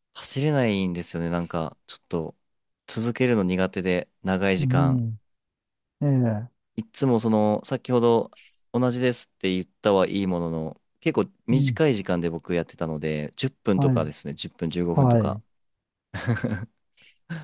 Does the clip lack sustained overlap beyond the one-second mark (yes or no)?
yes